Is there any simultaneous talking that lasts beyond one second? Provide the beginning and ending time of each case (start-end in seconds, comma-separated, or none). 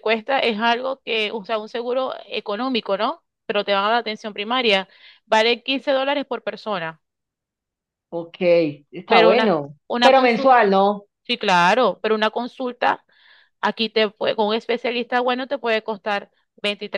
9.1-10.6